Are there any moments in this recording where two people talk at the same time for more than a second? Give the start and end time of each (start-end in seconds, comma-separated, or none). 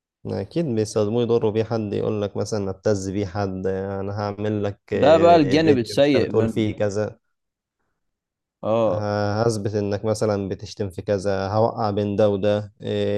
4.9-6.7